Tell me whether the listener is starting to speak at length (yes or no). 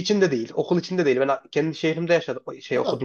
yes